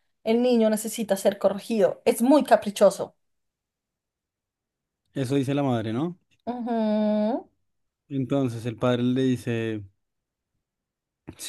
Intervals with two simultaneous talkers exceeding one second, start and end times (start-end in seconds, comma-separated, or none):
none